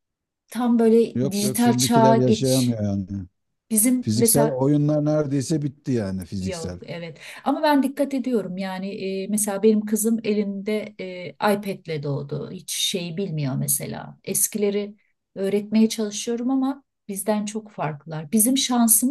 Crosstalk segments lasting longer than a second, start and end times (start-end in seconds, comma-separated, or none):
1.1-2.8